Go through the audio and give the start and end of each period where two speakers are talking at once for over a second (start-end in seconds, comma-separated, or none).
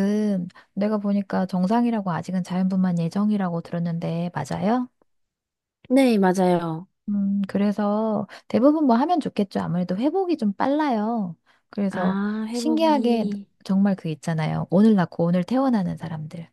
11.9-13.3